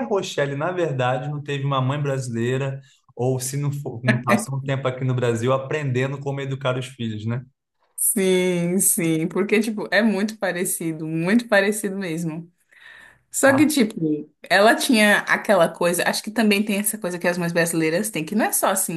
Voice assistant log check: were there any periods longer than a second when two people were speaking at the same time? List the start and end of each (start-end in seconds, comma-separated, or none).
none